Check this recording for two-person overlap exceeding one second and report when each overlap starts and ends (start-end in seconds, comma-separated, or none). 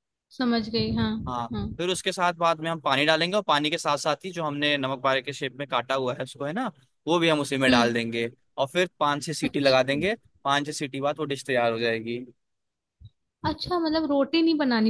none